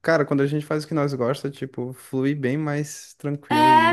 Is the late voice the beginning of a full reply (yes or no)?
yes